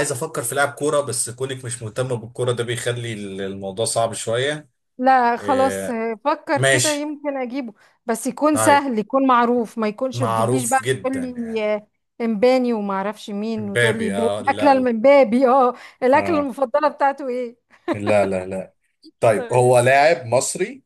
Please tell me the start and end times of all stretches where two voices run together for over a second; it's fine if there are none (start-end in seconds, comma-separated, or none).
10.1-11.6, 13.6-14.9